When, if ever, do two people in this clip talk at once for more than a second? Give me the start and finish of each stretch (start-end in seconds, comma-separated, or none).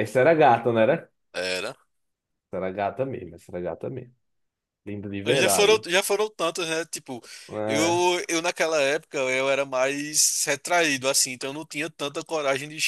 none